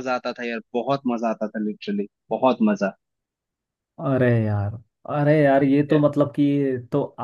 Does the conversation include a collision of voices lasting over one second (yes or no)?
no